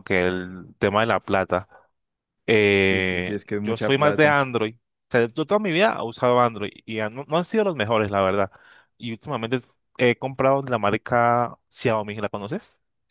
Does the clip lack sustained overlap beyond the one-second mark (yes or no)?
no